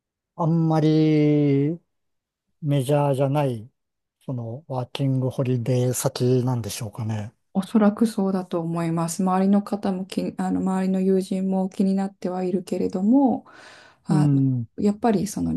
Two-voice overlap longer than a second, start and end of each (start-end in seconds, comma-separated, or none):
none